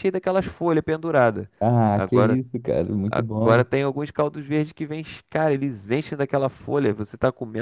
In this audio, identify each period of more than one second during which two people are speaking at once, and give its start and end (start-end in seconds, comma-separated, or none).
none